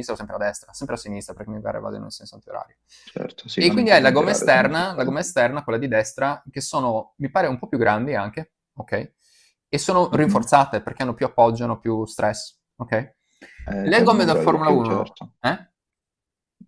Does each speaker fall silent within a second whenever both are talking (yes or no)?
no